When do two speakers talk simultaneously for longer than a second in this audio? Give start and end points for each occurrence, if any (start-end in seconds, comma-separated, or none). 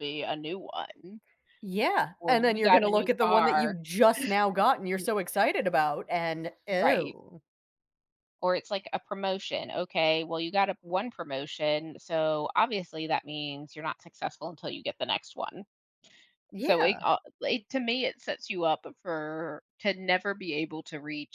2.2-3.8